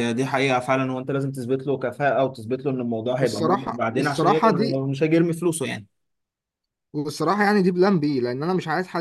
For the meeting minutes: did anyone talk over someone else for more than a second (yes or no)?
yes